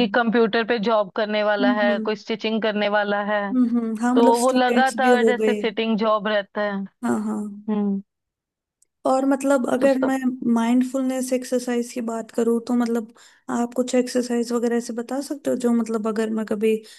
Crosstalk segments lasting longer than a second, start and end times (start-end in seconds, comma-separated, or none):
4.2-5.5